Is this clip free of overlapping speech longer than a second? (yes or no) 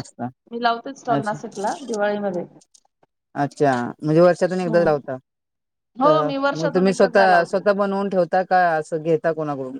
no